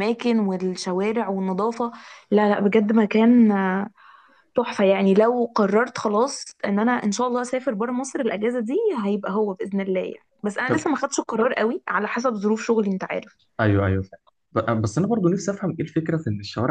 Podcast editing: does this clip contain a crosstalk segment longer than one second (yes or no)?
no